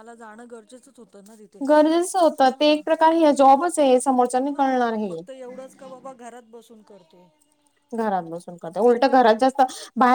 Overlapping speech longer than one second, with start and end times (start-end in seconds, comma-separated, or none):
none